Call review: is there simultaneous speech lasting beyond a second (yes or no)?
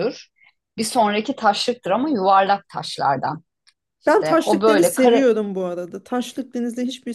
yes